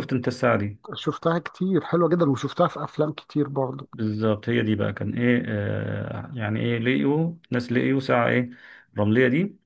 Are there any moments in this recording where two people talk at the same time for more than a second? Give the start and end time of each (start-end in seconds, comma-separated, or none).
none